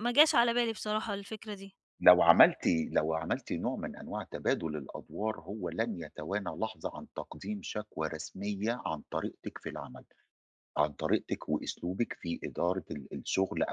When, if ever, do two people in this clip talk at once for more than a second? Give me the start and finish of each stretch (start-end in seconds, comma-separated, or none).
none